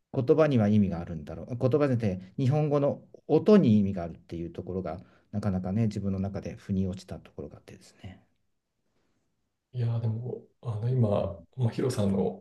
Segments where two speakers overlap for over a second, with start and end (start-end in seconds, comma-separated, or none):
none